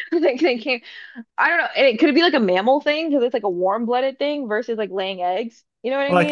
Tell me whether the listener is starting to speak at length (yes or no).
yes